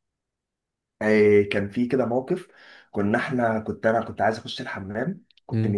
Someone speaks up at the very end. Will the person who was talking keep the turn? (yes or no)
yes